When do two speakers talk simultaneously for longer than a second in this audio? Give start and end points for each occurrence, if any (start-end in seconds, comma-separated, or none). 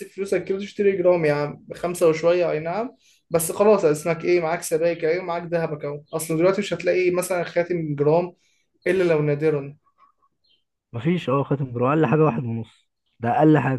none